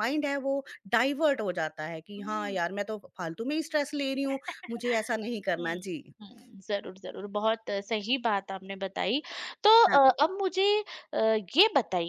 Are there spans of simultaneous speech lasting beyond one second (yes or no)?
no